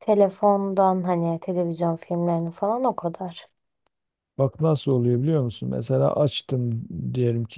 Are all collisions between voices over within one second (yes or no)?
yes